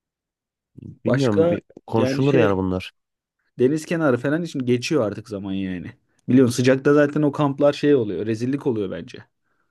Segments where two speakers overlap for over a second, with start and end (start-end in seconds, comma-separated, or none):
1.1-2.6